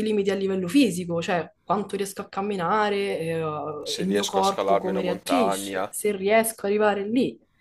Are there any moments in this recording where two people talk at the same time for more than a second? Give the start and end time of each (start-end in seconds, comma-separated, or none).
4.0-5.9